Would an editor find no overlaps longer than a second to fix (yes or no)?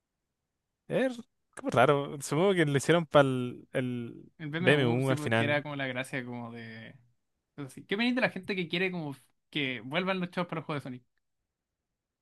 no